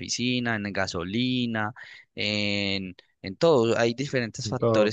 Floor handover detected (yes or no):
no